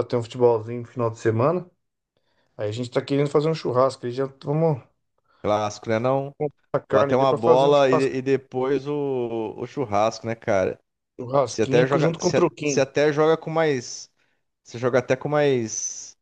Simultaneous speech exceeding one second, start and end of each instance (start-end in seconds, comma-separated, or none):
6.9-8.3, 11.5-12.8